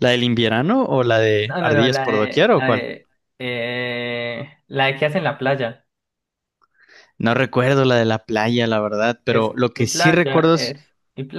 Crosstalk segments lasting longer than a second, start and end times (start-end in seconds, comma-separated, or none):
1.4-2.9, 9.3-10.8